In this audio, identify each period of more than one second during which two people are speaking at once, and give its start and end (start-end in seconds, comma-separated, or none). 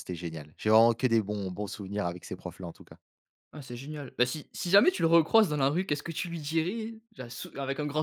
none